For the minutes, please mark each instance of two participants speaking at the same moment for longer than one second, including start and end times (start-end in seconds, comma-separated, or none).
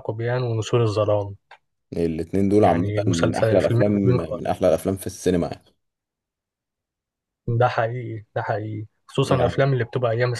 2.6-4.5